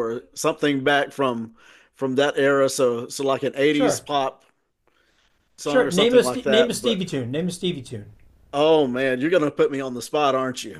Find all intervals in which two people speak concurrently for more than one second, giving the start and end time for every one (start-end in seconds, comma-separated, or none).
5.6-7.0